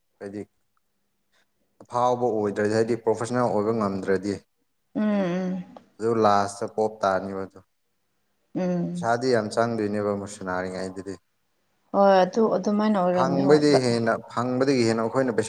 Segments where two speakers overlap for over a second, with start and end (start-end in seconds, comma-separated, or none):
none